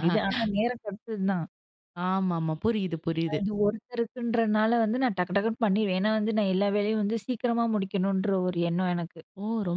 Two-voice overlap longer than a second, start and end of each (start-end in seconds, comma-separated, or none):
none